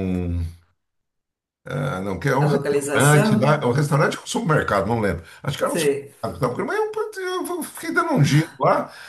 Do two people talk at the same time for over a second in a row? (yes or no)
yes